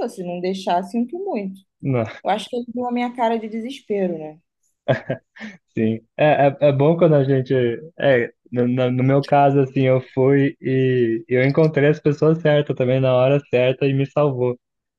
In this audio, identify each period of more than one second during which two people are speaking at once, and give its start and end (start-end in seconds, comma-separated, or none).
none